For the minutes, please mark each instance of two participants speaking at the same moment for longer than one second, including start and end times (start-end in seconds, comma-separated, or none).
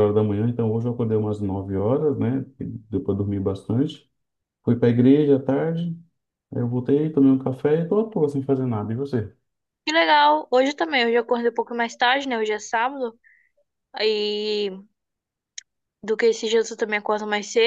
none